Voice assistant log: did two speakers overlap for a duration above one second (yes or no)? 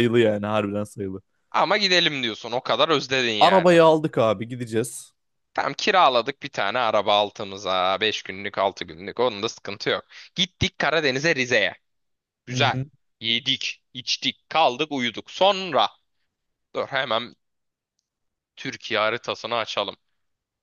no